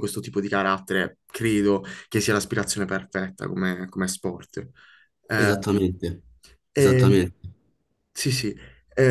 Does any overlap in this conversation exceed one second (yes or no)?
no